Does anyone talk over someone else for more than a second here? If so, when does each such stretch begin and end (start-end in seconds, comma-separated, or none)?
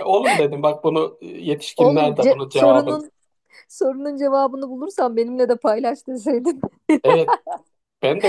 1.8-3.0